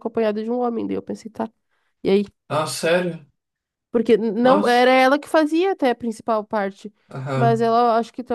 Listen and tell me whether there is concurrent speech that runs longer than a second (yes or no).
no